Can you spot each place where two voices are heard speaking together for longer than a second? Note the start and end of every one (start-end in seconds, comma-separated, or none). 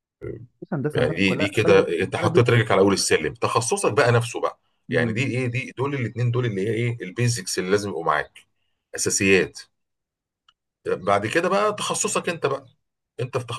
0.9-2.5